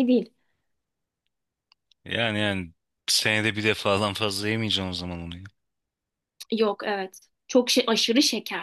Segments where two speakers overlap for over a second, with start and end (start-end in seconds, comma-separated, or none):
none